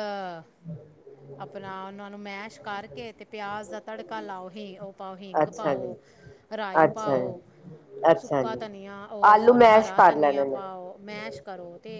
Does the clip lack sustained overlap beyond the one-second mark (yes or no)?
no